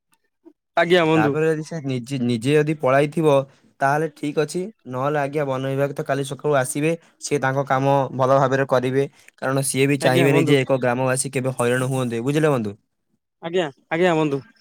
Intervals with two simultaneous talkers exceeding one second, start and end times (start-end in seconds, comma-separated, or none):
none